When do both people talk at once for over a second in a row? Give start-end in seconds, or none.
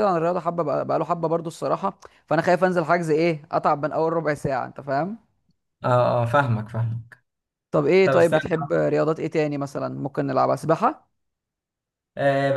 none